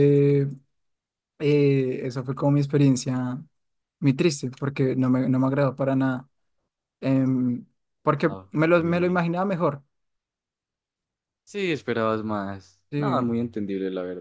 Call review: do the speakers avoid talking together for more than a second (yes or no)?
yes